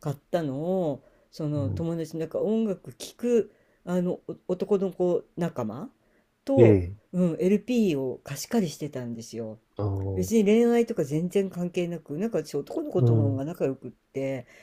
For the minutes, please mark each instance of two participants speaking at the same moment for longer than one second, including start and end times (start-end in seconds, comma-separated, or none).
none